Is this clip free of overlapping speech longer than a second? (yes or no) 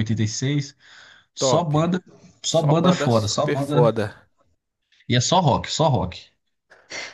no